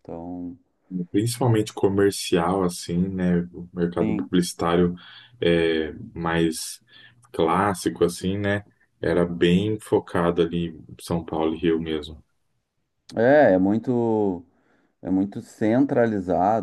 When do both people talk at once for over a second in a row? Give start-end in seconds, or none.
none